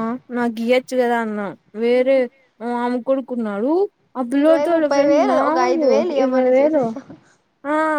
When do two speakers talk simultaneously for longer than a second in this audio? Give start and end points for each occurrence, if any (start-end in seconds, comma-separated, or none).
4.4-6.8